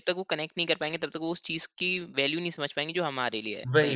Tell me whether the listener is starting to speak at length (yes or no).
yes